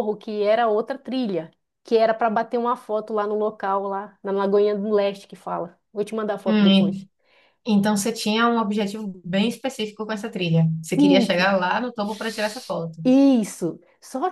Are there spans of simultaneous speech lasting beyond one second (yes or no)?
no